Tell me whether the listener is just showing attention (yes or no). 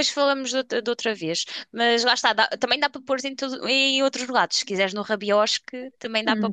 no